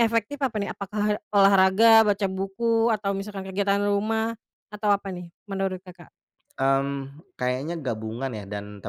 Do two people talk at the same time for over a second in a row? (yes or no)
no